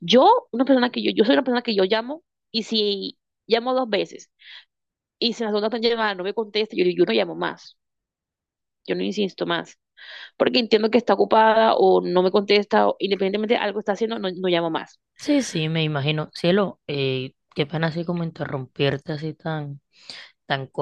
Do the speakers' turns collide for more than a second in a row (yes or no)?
no